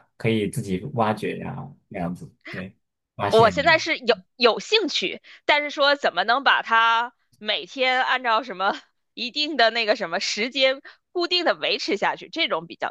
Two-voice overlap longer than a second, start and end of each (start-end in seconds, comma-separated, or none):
none